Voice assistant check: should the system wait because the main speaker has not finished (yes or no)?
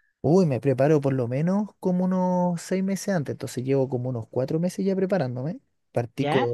yes